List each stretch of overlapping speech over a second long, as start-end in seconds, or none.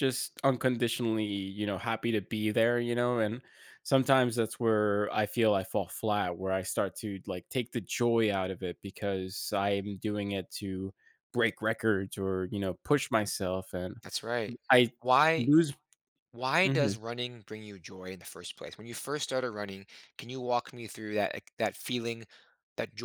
none